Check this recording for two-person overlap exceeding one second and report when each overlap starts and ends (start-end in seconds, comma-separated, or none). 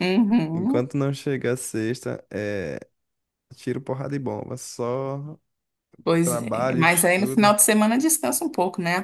6.2-7.5